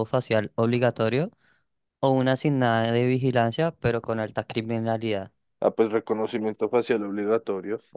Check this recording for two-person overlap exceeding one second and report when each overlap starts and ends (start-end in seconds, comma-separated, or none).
none